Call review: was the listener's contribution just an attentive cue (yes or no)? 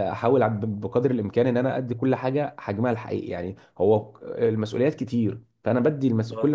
yes